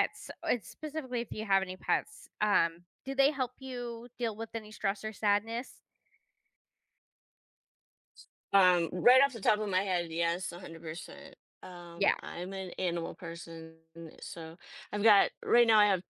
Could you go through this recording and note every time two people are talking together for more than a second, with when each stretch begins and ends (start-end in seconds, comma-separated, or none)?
none